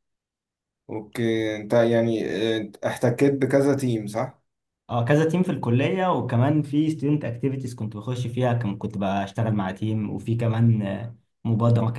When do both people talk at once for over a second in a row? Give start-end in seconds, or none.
none